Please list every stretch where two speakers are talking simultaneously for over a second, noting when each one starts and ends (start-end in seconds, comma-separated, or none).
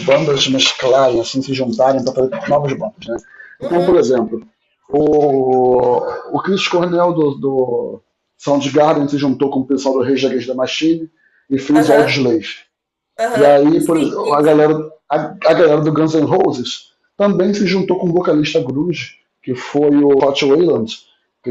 13.3-14.6